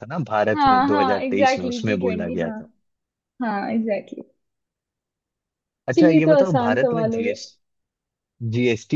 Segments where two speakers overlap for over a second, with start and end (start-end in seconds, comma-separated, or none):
0.5-2.5, 5.9-7.4